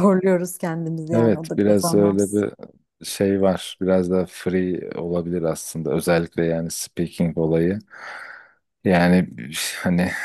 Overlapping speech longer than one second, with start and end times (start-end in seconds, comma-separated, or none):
1.1-2.5